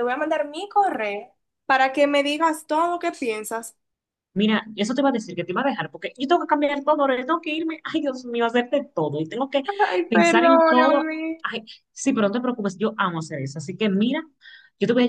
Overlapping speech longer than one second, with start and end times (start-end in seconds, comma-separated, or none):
10.1-11.4